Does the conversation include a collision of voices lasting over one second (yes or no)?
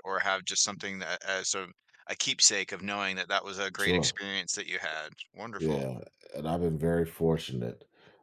no